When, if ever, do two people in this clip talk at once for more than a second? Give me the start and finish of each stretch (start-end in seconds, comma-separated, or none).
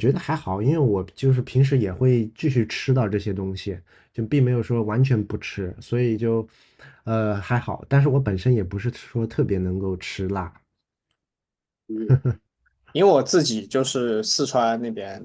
none